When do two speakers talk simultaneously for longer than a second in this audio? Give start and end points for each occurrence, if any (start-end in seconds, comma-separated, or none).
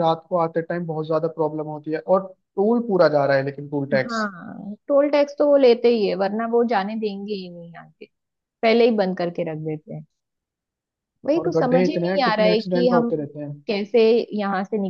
11.4-13.1